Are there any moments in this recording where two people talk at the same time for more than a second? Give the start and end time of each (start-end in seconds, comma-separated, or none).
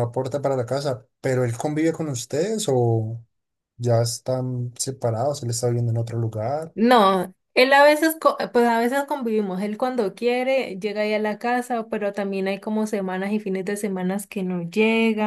none